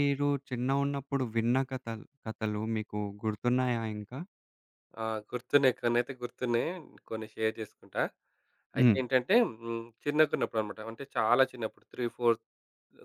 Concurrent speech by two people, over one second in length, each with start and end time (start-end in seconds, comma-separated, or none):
none